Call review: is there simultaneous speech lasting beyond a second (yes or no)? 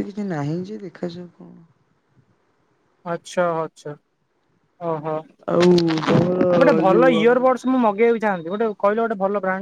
no